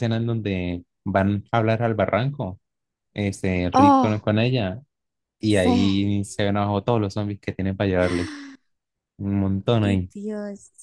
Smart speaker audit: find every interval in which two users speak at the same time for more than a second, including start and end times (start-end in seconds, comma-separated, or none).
none